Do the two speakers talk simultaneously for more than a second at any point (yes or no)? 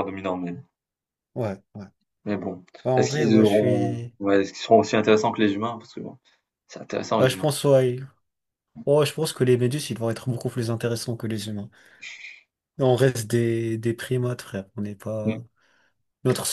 yes